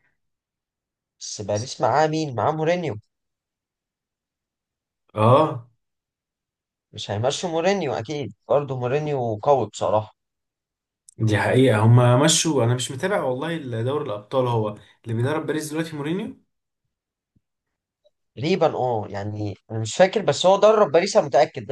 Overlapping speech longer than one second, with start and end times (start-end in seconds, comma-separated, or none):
none